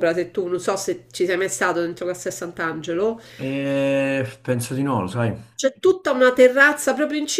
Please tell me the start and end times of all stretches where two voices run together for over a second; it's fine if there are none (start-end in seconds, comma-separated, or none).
none